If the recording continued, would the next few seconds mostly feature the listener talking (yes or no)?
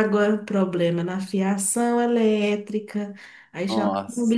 no